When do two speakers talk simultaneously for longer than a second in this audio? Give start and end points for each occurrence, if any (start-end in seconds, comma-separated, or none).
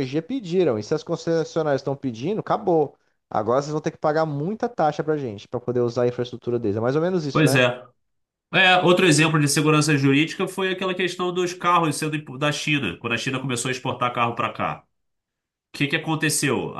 none